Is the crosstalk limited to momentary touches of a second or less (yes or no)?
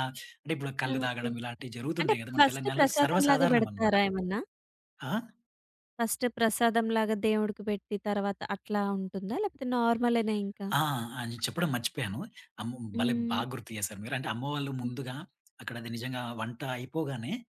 no